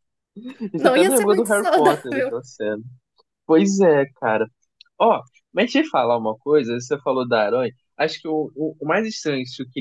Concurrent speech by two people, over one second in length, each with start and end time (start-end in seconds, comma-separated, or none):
0.8-2.3